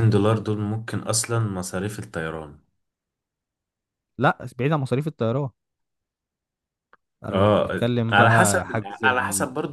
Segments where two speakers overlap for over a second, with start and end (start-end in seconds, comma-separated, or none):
7.3-8.7